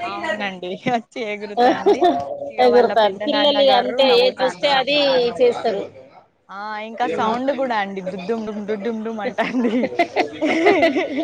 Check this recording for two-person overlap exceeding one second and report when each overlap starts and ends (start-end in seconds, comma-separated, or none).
2.6-4.9